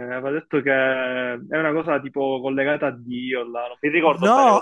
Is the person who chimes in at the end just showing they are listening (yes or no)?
no